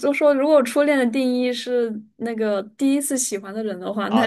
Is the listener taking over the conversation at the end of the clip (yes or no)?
yes